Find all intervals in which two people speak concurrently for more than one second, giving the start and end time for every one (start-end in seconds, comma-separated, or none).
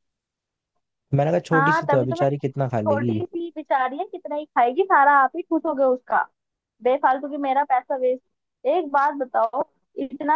1.5-3.2